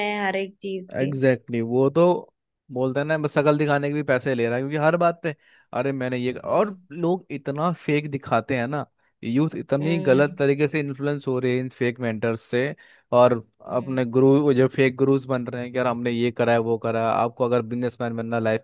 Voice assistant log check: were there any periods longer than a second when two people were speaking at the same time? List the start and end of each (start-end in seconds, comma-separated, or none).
none